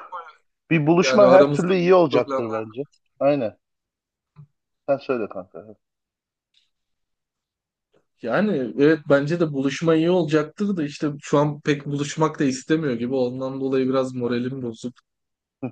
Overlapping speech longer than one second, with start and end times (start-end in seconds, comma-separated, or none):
1.0-2.7